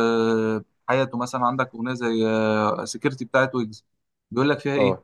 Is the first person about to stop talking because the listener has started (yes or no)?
no